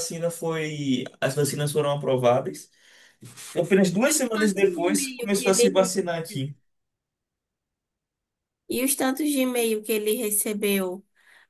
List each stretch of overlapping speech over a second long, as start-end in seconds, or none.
4.1-5.9